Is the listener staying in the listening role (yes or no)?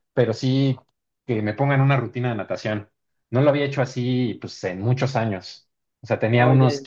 yes